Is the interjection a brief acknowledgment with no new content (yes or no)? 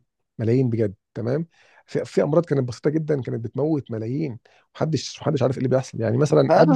no